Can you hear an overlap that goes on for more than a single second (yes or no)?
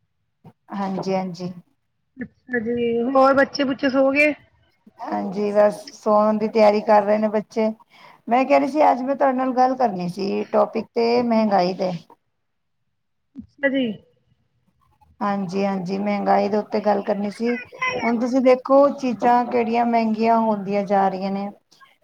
no